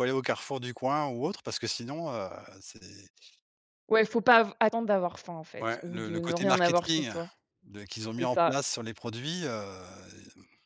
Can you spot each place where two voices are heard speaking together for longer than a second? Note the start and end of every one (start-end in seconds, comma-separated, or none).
5.6-7.1